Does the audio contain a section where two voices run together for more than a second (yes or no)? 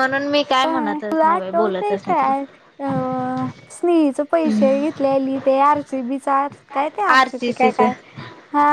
yes